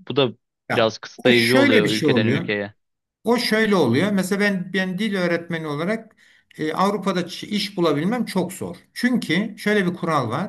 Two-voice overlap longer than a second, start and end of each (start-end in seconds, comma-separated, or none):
0.7-2.5